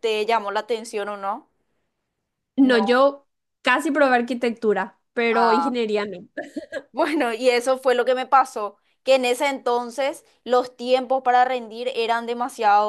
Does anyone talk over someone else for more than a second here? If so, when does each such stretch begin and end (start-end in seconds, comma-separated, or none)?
none